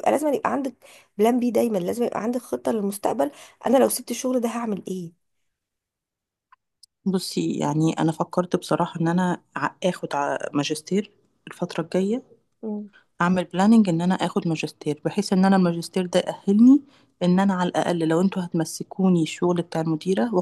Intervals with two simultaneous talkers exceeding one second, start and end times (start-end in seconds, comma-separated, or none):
none